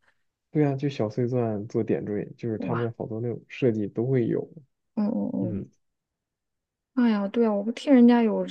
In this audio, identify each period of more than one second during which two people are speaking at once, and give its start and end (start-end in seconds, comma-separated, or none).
none